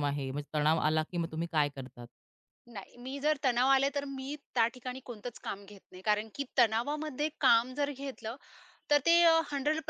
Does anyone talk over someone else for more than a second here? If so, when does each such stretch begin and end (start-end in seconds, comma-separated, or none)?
none